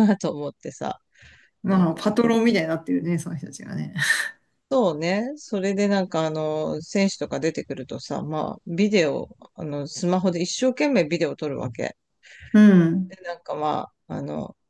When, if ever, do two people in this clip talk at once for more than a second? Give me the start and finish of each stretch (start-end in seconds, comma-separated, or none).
none